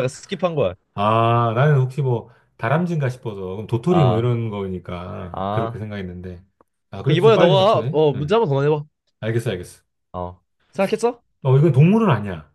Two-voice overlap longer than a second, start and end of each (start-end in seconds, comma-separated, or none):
7.0-8.4